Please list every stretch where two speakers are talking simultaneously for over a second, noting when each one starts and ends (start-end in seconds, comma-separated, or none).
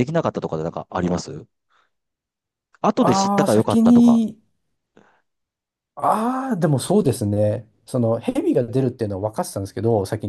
3.0-4.2